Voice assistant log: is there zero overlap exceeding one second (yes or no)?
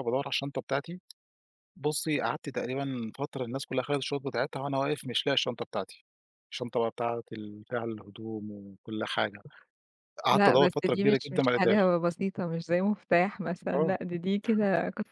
no